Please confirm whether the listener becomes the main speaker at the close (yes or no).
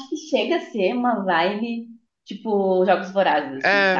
yes